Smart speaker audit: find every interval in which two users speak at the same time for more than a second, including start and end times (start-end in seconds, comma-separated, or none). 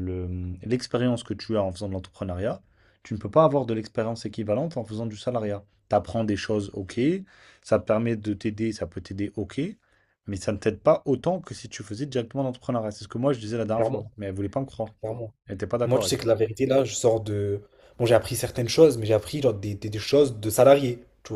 none